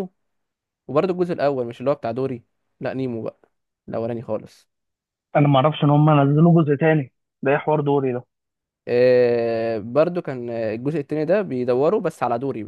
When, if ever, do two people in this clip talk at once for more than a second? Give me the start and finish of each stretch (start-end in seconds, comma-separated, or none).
none